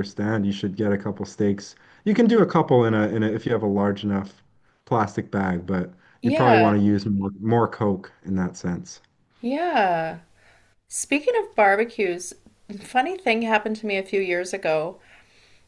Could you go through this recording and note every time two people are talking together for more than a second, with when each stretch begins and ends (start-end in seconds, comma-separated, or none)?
none